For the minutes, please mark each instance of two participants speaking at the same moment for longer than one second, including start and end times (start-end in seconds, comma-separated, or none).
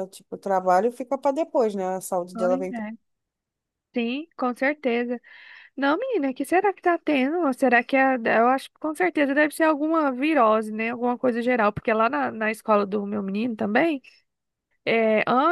none